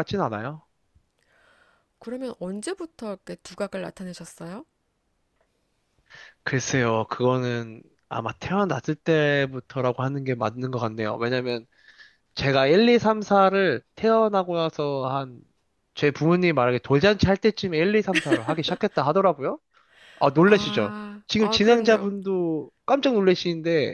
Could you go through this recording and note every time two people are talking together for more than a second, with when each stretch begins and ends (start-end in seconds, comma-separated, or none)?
20.5-22.1